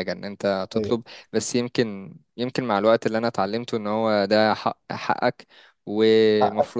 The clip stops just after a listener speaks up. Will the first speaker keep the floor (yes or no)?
no